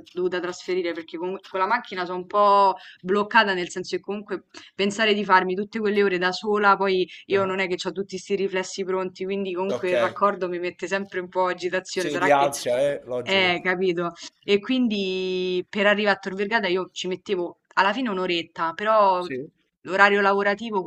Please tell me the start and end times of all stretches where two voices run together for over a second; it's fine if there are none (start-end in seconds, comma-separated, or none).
none